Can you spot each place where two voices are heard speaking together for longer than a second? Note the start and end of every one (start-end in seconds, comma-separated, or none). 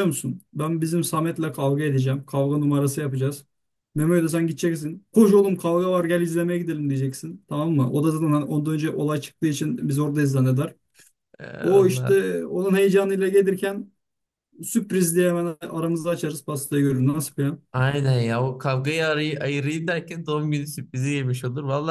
none